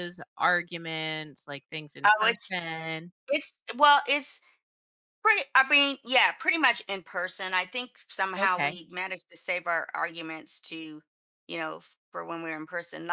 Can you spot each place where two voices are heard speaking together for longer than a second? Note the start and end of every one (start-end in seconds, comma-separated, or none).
none